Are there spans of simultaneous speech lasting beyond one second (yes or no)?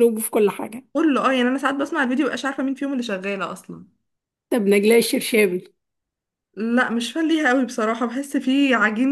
no